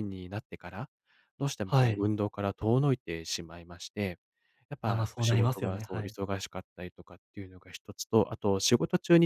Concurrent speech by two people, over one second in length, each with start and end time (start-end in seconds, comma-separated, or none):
4.8-6.2